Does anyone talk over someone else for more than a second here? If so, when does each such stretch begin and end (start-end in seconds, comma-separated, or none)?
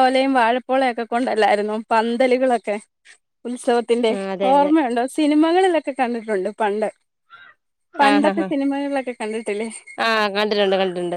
none